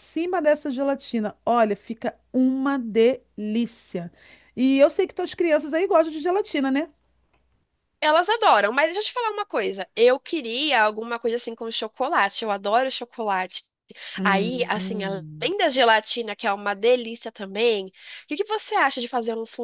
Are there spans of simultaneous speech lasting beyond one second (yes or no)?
yes